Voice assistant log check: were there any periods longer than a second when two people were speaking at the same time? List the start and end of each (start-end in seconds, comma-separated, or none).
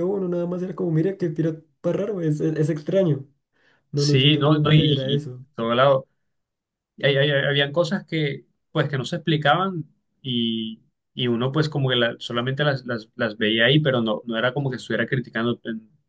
3.9-5.5